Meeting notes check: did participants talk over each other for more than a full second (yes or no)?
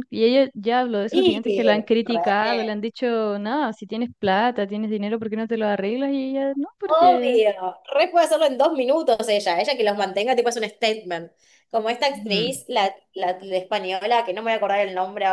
yes